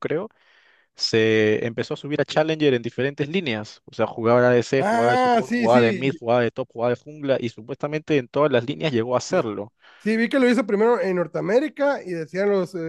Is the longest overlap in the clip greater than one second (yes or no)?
yes